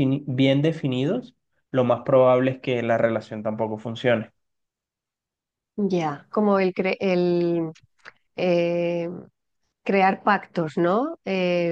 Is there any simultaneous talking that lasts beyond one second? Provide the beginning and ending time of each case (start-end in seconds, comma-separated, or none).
none